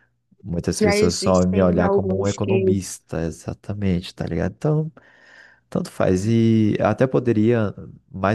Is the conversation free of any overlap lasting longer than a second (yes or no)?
no